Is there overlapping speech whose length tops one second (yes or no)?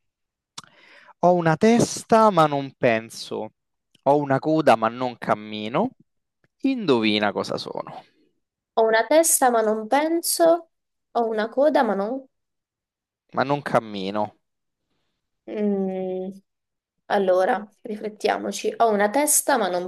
no